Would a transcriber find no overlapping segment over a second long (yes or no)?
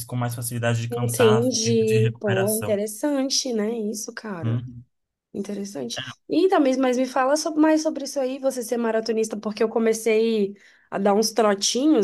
no